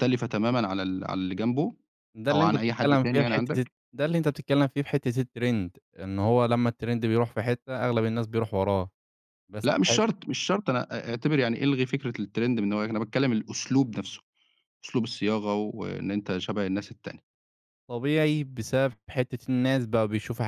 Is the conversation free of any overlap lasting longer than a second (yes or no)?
no